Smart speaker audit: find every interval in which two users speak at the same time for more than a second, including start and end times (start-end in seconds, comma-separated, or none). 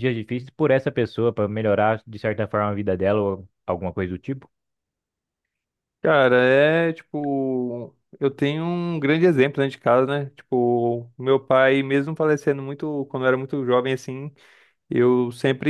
none